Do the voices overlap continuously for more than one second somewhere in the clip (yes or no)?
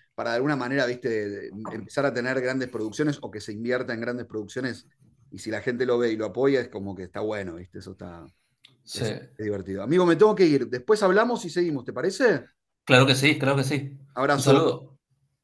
no